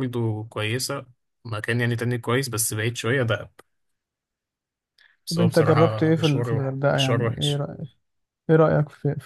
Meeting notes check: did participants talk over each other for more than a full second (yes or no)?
yes